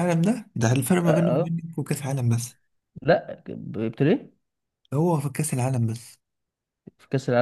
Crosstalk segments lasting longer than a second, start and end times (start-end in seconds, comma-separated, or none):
none